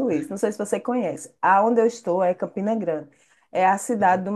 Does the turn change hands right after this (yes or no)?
no